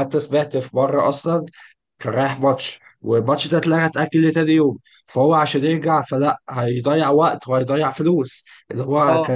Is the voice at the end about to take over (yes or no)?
no